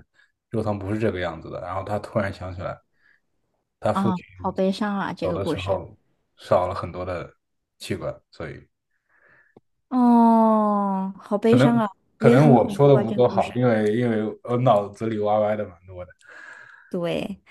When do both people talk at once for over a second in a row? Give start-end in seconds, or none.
12.2-13.5